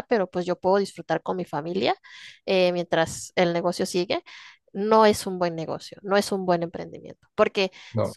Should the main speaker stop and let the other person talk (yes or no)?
no